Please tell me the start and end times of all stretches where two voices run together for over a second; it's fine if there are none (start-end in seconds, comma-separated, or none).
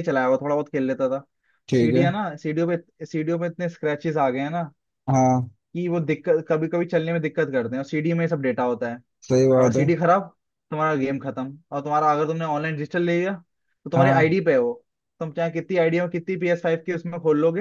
none